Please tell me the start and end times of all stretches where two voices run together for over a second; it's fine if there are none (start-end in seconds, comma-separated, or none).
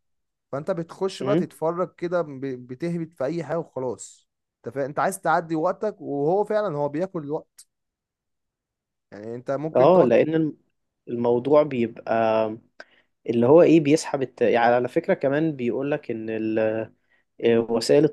none